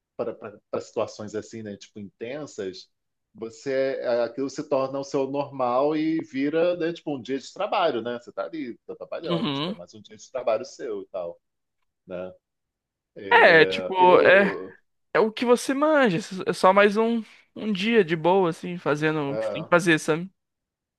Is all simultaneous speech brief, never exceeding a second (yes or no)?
no